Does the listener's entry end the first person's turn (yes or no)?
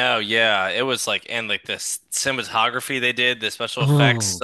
no